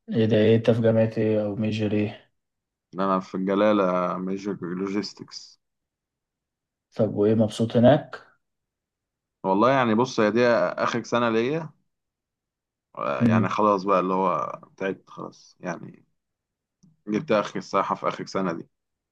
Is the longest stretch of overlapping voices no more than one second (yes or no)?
yes